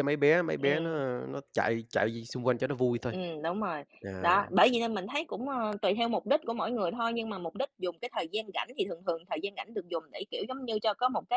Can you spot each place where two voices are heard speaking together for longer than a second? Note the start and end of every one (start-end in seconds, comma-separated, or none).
none